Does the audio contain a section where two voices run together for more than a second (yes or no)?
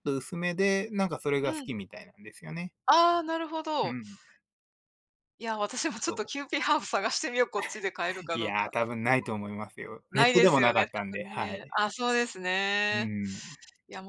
yes